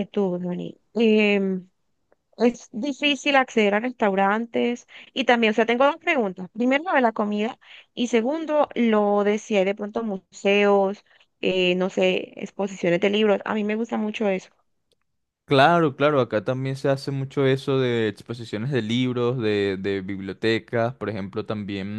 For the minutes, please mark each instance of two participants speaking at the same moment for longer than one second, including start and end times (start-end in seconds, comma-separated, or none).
none